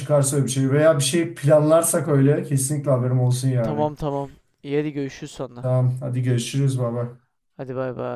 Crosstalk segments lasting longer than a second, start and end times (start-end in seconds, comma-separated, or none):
none